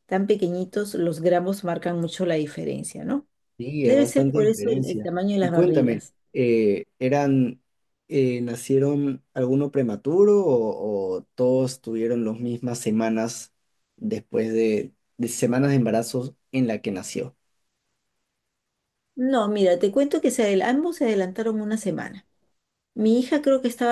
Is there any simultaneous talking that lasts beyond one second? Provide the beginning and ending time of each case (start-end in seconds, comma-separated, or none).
3.8-6.2